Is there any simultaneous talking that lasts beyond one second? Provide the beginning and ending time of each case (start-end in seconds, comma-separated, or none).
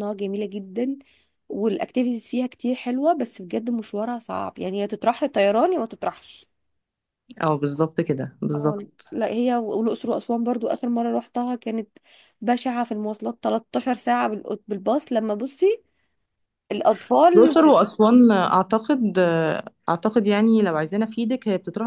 none